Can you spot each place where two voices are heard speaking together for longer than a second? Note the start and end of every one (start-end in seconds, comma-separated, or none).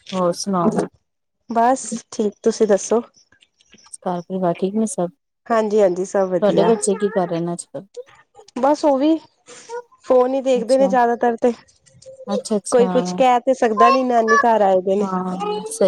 none